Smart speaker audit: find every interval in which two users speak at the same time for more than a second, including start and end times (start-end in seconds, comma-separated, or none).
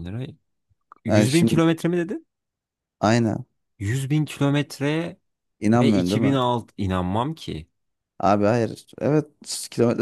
none